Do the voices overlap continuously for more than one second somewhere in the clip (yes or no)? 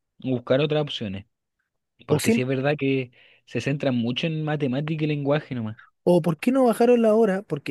no